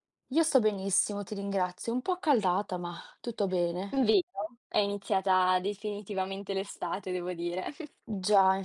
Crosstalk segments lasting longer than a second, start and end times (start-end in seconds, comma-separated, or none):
none